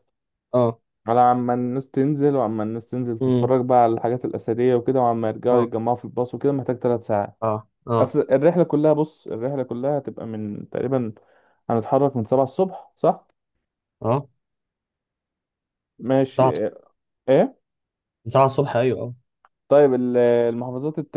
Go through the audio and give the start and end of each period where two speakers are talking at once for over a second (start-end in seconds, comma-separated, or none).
none